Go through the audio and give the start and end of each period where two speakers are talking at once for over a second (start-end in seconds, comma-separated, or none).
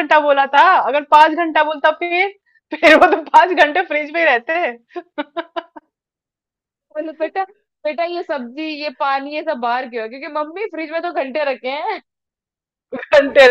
none